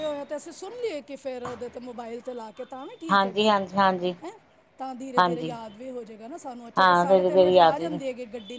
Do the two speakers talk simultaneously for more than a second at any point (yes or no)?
yes